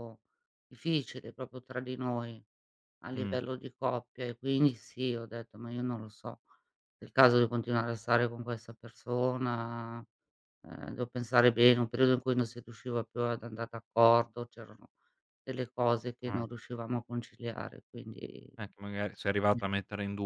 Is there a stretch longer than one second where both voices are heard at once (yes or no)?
no